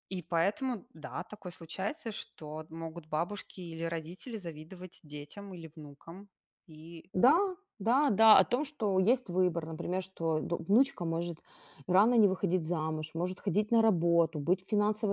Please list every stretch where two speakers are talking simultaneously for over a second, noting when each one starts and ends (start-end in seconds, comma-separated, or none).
none